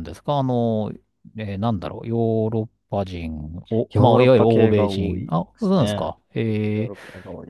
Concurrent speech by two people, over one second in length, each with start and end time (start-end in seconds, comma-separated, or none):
3.9-6.1